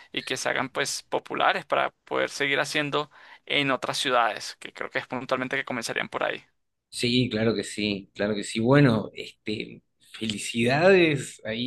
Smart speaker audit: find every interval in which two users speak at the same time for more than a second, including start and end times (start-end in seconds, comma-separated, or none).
none